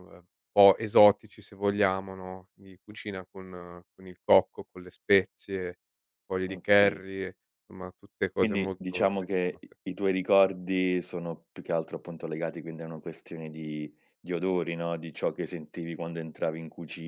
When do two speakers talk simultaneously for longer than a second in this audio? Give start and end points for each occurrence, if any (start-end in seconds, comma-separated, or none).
8.3-9.8